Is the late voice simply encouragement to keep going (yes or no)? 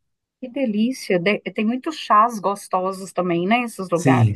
no